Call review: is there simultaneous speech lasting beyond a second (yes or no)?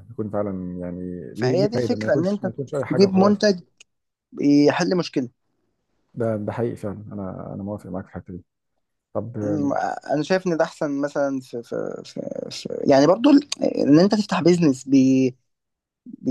yes